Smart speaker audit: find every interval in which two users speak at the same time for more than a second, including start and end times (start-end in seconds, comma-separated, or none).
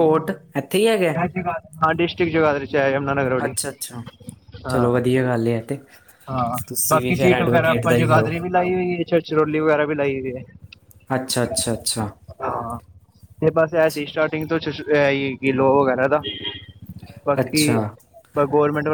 6.7-8.3